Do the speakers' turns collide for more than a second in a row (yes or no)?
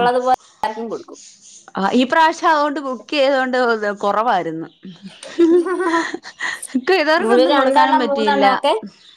yes